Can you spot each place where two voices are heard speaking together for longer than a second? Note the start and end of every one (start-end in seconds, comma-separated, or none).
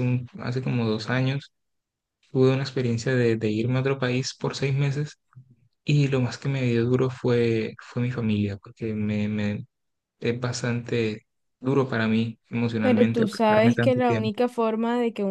12.8-14.3